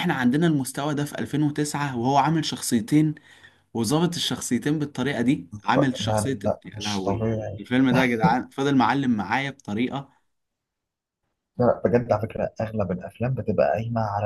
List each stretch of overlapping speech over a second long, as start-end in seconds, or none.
5.7-7.7